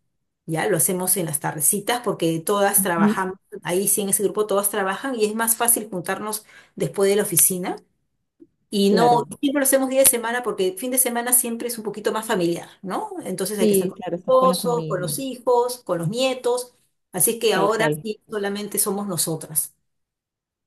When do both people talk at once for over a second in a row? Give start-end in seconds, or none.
13.6-15.1